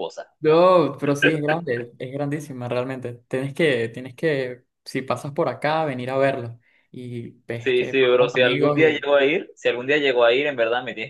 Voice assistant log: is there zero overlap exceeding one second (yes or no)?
no